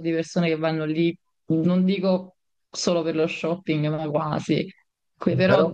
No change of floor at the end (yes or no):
yes